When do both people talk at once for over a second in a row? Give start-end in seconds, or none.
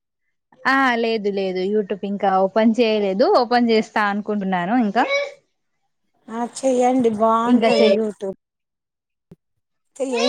none